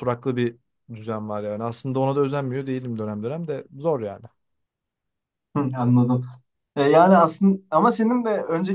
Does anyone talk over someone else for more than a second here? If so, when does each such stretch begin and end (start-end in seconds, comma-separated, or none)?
none